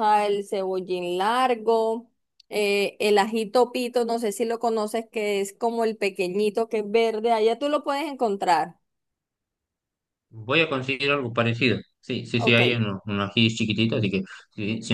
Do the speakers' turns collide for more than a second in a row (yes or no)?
no